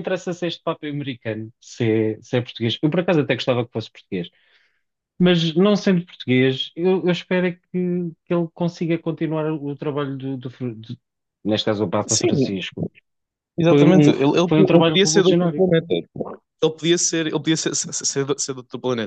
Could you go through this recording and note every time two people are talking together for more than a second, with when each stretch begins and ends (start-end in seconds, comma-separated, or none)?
13.7-15.7